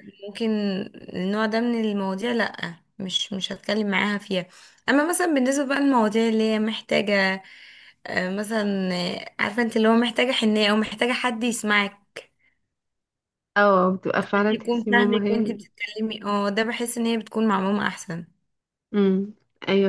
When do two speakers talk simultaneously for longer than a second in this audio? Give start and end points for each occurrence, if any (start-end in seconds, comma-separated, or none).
14.2-15.7